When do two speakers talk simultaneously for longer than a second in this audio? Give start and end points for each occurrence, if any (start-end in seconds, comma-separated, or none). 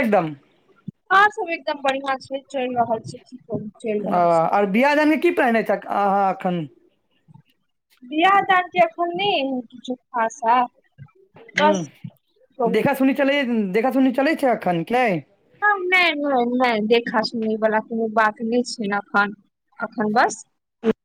none